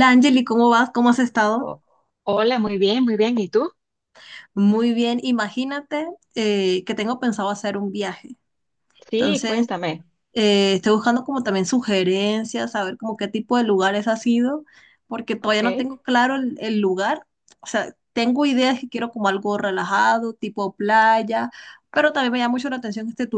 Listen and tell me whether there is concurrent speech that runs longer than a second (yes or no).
no